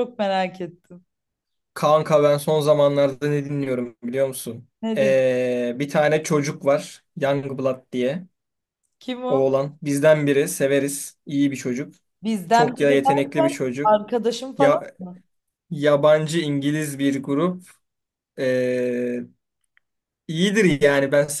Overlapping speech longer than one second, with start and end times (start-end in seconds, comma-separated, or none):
12.5-14.0